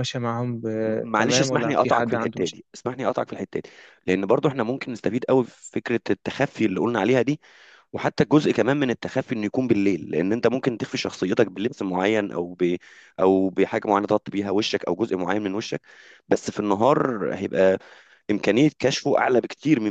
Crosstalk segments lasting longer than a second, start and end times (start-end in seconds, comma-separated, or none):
0.8-2.6